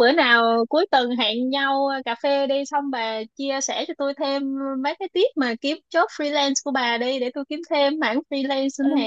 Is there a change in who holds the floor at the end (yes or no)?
yes